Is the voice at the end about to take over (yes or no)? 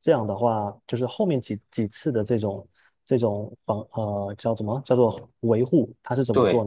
no